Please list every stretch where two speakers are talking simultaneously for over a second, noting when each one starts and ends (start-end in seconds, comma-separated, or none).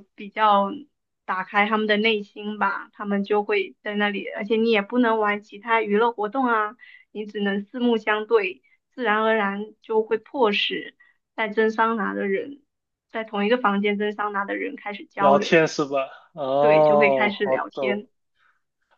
16.6-18.0